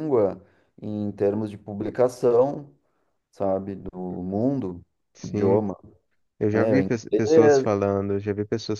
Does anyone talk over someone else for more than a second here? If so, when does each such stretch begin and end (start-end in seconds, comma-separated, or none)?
6.5-7.7